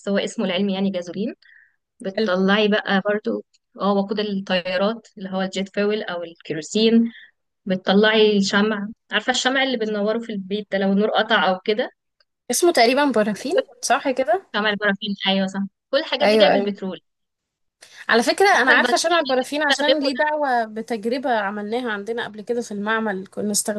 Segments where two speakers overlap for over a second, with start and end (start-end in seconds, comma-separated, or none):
18.6-20.2